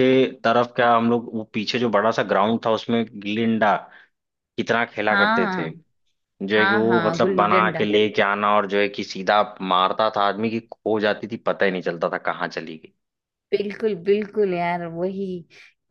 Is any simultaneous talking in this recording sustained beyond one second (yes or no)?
yes